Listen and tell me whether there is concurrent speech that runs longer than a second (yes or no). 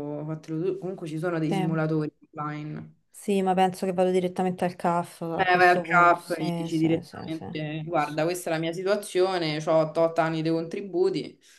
yes